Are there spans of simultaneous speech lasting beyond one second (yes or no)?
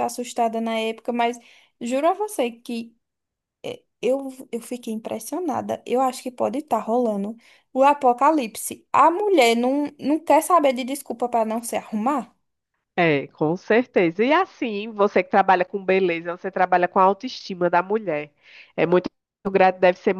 no